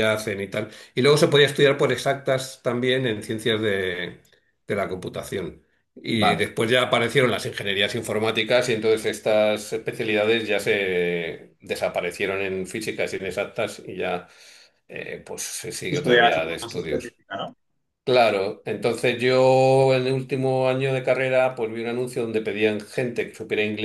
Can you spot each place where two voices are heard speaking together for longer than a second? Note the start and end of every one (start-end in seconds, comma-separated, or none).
15.9-17.1